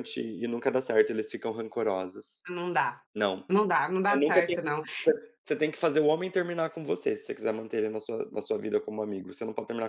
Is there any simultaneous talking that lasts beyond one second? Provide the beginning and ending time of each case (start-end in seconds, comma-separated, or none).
none